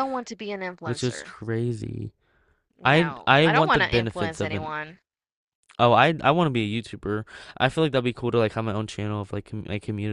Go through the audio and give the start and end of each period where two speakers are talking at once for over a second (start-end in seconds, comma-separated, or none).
2.9-4.7